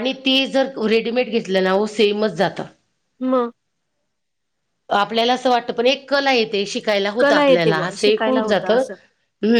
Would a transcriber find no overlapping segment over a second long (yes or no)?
no